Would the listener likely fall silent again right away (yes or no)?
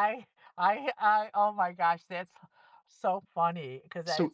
yes